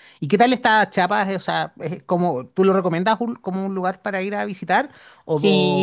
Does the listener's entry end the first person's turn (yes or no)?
yes